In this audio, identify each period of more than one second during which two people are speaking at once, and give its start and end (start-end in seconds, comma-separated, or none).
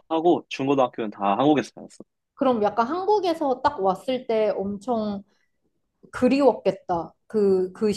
none